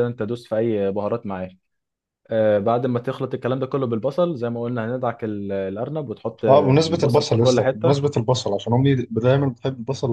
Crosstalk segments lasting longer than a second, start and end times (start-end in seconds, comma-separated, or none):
6.5-8.0